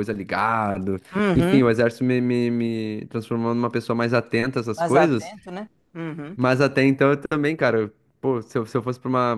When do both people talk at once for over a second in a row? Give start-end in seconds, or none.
none